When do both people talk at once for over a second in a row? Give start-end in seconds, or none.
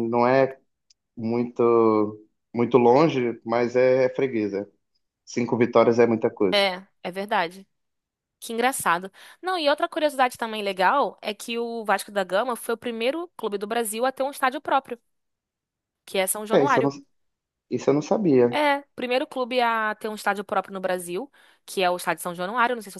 none